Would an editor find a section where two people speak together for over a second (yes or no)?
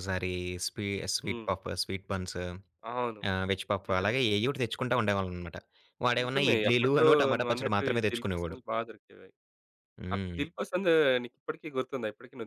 yes